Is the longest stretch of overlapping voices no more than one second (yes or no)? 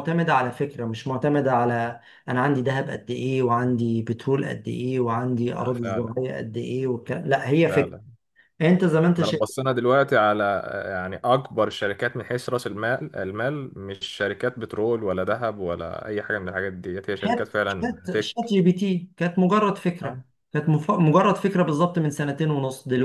no